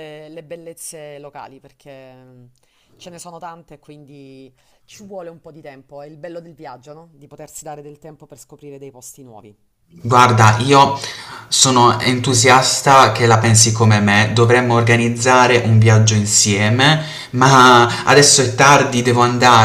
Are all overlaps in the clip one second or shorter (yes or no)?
yes